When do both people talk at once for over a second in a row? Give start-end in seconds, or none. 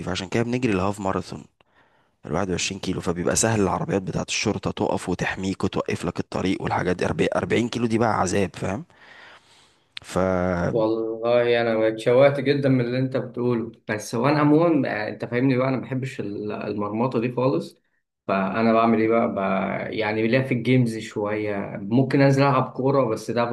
none